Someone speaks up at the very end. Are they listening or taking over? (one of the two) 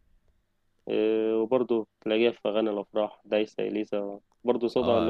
taking over